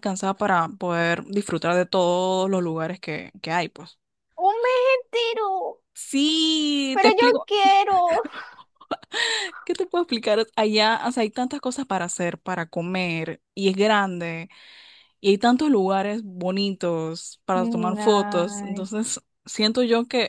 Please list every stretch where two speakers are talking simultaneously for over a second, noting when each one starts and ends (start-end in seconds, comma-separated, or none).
17.5-18.9